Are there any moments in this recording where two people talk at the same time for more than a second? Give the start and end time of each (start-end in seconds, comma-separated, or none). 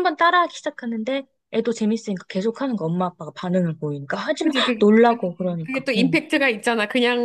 4.4-6.2